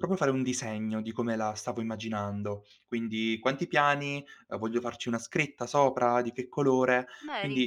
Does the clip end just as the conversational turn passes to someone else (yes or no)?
no